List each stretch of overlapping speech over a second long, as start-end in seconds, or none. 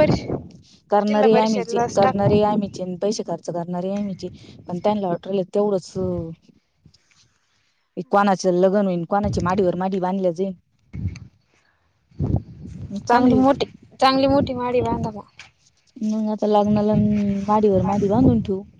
1.1-2.4